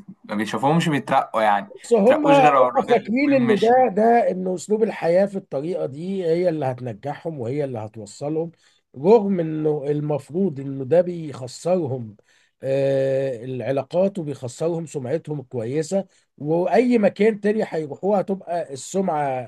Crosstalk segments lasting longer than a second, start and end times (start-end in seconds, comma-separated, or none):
1.7-3.7